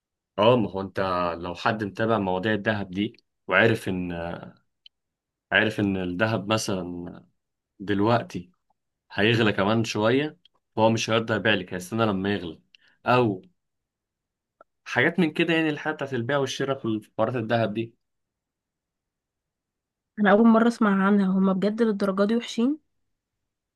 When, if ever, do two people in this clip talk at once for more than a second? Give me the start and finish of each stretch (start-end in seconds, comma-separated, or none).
none